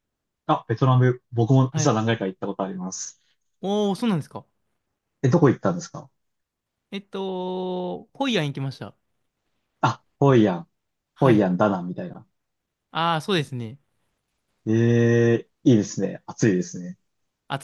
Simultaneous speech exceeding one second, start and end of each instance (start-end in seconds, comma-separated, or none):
none